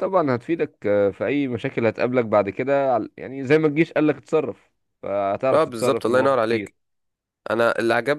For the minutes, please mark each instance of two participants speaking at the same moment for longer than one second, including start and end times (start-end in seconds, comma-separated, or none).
5.5-6.7